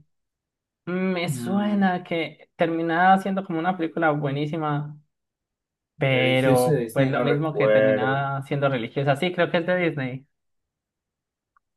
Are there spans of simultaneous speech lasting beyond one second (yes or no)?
yes